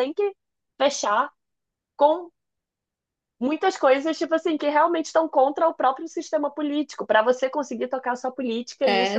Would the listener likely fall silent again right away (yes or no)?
no